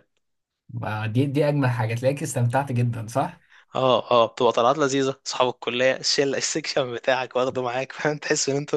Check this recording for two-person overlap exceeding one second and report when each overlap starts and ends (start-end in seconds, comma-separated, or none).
none